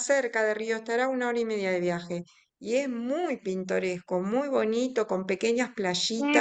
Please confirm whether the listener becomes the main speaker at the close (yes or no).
yes